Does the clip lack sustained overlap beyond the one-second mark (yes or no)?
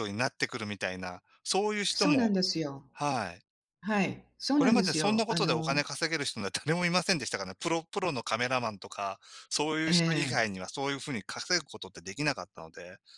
no